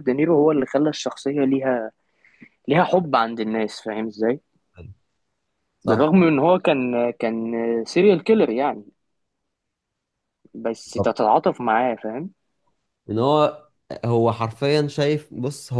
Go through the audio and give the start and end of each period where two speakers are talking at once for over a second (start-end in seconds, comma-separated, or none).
none